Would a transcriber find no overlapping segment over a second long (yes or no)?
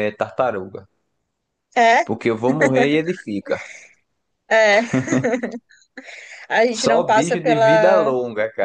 no